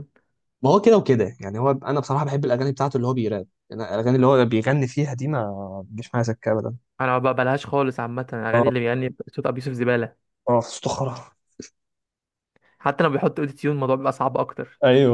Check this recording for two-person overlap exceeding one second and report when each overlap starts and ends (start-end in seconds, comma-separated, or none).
none